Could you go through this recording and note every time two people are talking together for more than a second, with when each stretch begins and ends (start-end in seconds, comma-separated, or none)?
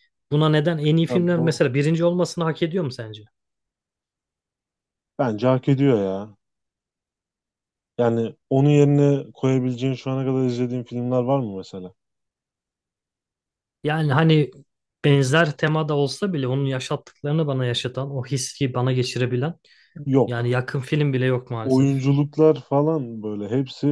none